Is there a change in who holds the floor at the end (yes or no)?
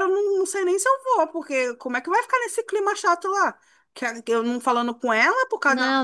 no